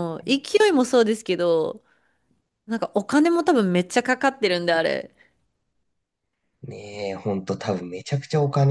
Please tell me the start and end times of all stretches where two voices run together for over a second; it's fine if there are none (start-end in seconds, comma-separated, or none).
none